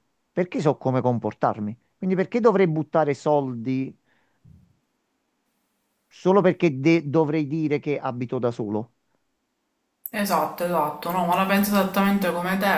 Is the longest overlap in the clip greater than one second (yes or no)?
no